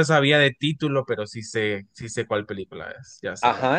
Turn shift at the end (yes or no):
yes